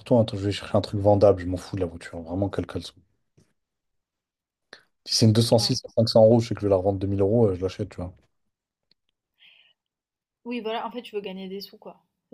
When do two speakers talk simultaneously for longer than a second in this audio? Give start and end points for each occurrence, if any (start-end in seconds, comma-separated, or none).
none